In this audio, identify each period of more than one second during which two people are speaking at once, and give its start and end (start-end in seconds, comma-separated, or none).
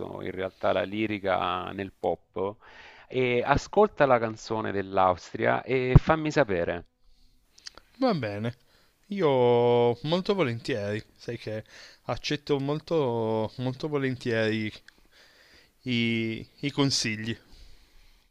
none